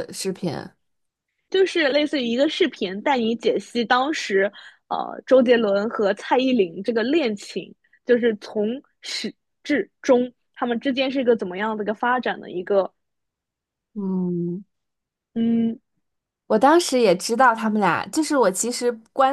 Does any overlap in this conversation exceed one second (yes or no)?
no